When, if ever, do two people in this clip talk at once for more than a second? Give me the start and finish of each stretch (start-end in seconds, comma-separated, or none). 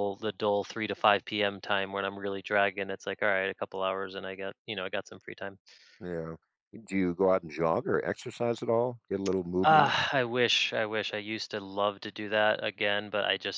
none